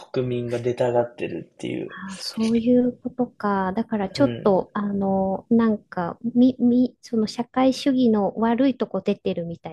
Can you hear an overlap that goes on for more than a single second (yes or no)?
no